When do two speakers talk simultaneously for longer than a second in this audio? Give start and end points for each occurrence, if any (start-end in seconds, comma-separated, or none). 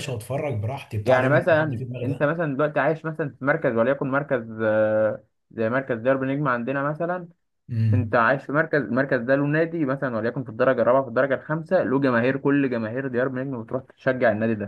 1.0-2.3